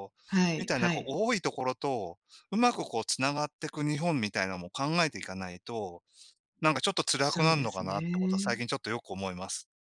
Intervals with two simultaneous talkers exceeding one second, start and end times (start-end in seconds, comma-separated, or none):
7.2-8.6